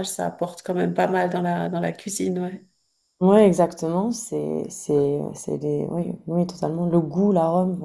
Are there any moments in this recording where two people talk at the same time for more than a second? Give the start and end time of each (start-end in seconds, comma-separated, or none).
none